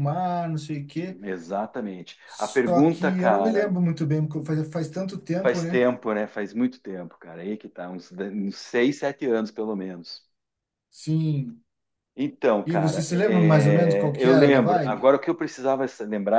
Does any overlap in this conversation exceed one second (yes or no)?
yes